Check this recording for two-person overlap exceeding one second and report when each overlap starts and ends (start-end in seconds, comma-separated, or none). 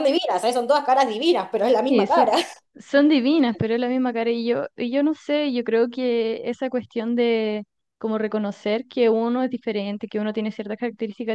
none